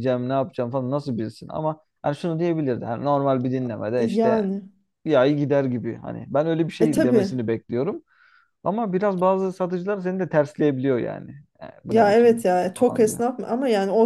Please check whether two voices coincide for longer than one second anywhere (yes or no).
yes